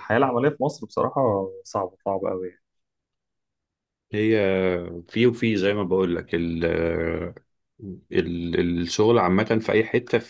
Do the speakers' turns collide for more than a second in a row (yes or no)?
no